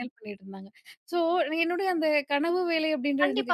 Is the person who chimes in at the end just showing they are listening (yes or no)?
no